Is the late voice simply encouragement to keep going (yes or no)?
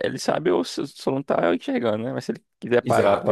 no